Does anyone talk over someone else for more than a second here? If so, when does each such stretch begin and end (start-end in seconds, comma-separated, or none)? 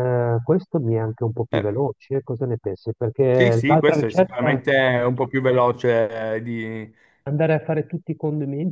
3.3-4.6